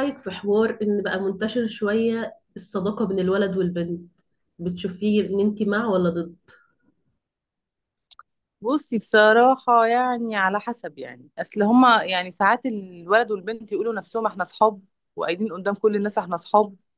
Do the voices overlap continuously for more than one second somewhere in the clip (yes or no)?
no